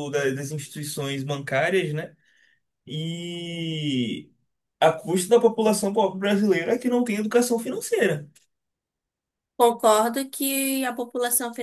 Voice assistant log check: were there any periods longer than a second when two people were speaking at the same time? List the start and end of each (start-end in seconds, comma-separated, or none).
none